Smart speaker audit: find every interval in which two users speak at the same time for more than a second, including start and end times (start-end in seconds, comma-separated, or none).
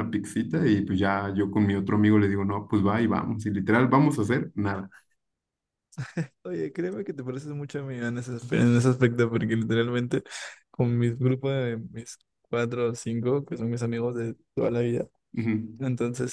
none